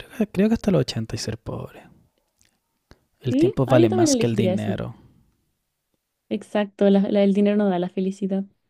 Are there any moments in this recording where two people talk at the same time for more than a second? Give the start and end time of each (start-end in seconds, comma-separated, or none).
3.3-4.8